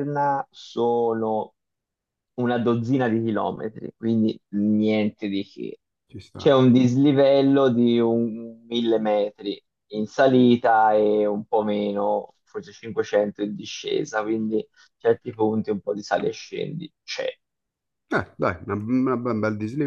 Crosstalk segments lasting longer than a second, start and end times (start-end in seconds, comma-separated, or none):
none